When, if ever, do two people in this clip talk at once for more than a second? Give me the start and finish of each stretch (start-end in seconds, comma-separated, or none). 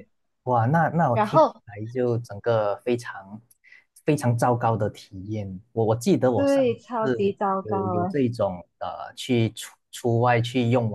6.3-8.2